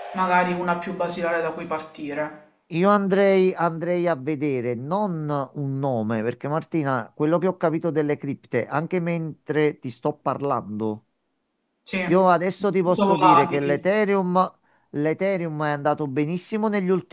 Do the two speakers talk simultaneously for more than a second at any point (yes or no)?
yes